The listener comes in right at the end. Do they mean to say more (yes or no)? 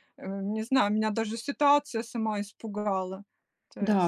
yes